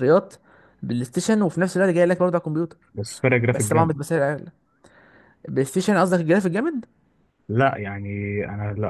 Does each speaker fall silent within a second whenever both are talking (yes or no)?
yes